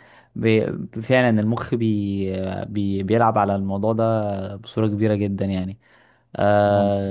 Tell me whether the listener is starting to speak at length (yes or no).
no